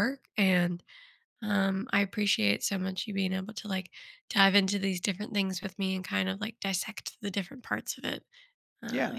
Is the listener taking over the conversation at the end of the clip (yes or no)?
yes